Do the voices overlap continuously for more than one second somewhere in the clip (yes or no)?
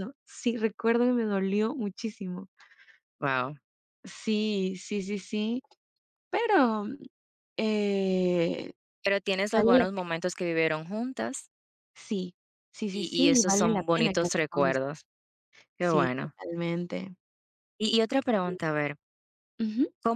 yes